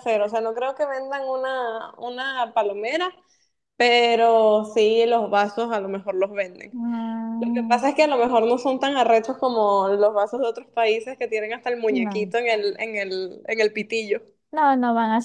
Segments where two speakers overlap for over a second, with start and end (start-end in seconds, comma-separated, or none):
none